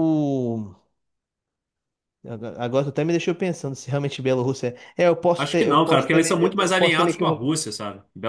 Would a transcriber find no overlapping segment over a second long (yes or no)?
no